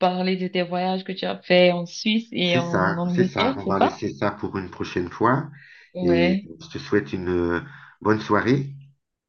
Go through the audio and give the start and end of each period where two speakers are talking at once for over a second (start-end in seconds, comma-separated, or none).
2.4-4.0